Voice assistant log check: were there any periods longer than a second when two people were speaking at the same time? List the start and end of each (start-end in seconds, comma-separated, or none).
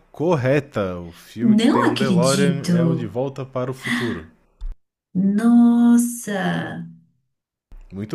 1.4-3.1